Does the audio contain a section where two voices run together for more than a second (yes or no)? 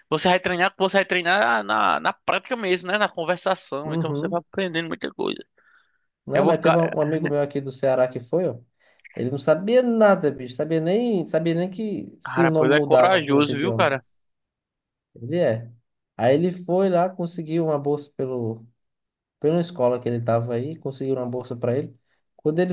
yes